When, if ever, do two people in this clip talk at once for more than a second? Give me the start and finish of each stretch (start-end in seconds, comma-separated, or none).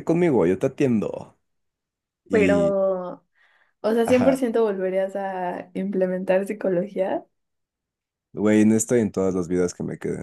none